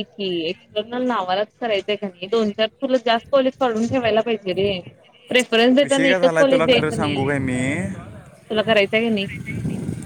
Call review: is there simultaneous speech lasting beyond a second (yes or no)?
yes